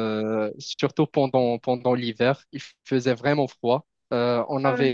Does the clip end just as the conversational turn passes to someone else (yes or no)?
no